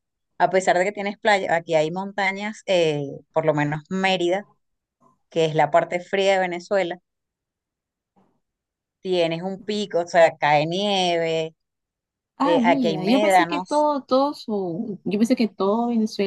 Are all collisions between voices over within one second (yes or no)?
no